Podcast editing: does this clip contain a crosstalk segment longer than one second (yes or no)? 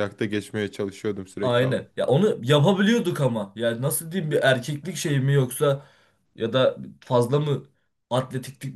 no